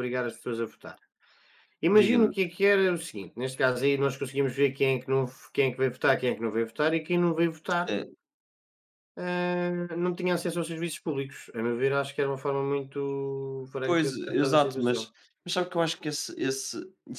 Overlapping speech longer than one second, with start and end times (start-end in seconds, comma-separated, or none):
13.8-15.1